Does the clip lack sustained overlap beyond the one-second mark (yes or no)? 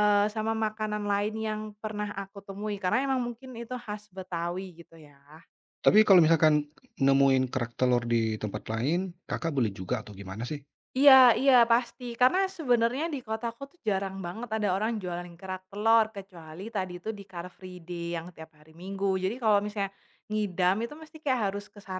yes